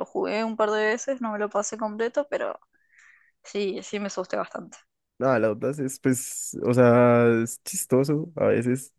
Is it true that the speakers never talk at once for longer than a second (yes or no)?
yes